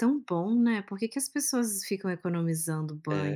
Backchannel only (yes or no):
no